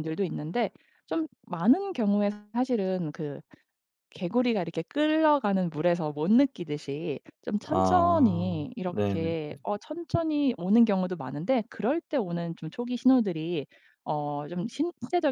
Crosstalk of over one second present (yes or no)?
yes